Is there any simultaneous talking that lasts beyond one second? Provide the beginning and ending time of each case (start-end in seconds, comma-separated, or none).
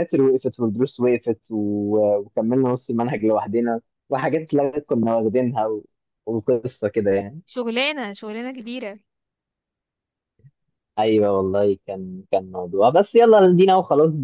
none